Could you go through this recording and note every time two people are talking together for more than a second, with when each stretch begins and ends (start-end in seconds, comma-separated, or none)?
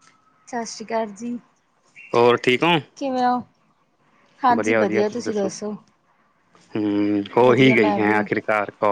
none